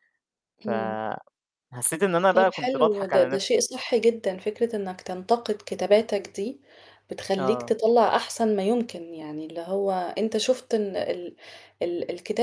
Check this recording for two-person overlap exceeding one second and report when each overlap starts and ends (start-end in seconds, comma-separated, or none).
2.3-3.6